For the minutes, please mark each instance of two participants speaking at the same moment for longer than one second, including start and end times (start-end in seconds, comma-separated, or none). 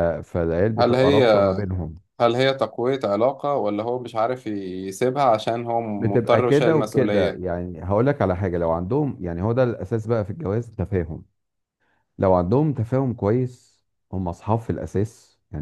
6.0-7.4